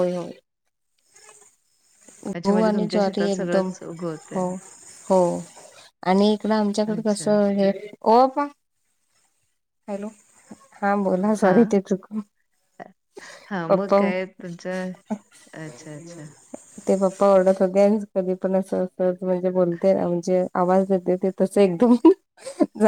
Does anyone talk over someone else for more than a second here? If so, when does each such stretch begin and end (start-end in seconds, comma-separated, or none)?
2.4-3.7